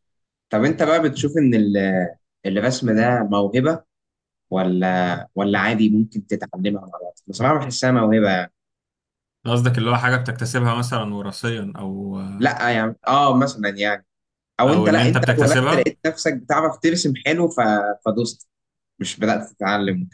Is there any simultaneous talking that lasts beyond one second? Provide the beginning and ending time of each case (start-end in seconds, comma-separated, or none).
14.7-15.9